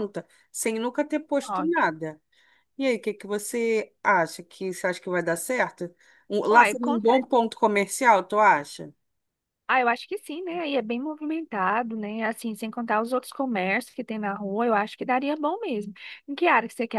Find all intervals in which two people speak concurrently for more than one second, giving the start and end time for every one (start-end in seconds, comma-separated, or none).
none